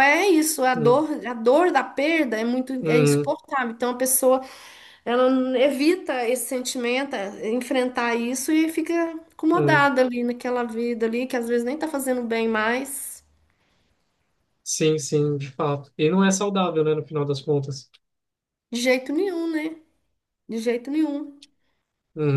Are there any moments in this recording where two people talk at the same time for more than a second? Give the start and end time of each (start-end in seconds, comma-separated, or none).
none